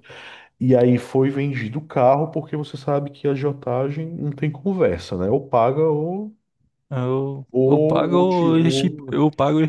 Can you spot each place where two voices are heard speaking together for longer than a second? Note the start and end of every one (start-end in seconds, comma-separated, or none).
7.5-9.1